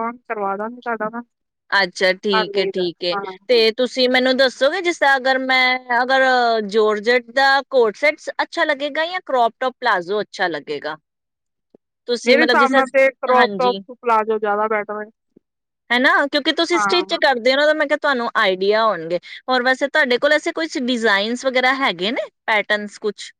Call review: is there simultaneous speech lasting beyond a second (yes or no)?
yes